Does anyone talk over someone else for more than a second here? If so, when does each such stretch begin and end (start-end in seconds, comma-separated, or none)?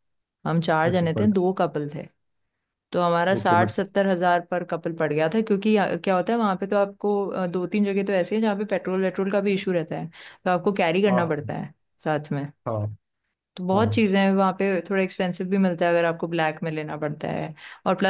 none